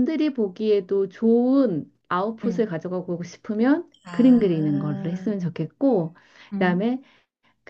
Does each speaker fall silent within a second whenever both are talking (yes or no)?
no